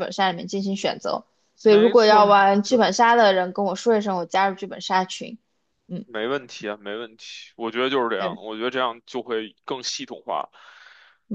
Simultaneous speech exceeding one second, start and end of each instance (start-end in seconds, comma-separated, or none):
1.6-2.9